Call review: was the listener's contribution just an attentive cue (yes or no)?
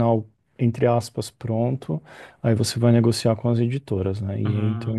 yes